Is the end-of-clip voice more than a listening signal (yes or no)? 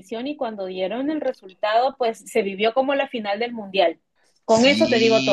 yes